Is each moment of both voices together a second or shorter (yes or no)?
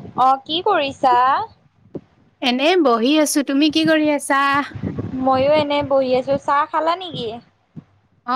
yes